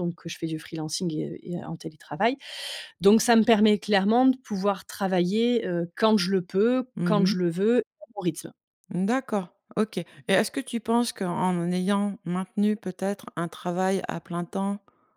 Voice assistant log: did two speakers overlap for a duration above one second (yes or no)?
no